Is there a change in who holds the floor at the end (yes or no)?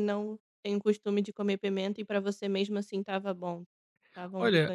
yes